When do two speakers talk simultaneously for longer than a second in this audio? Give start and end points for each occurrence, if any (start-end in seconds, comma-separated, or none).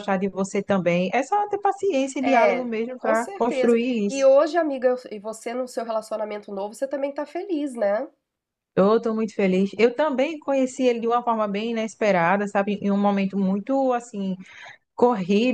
2.2-4.3